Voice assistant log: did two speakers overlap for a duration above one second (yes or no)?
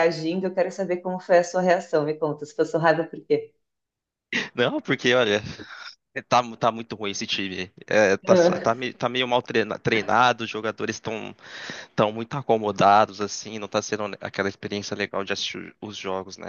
no